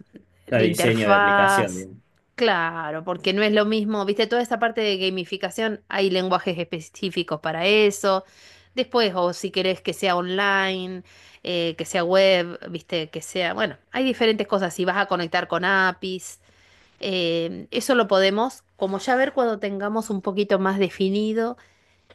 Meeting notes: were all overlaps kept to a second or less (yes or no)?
no